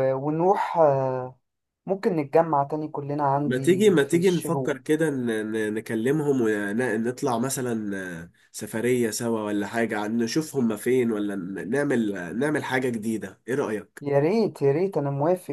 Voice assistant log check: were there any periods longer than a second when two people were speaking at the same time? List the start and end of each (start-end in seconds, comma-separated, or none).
3.4-4.8